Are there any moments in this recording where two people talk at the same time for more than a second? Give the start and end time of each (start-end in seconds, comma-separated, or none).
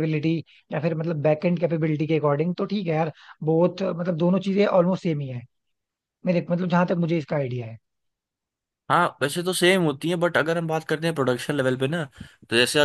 none